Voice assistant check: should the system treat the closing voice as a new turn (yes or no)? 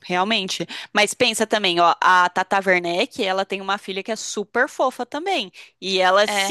no